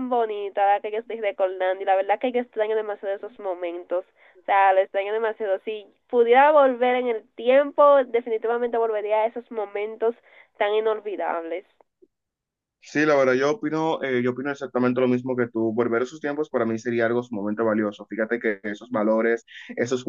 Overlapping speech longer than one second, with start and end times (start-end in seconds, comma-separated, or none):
none